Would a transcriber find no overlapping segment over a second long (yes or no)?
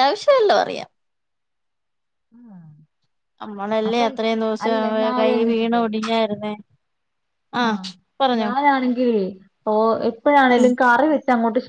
yes